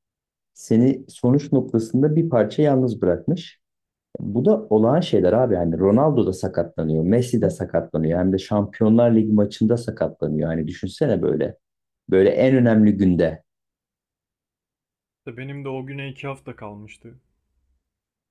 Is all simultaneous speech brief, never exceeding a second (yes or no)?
yes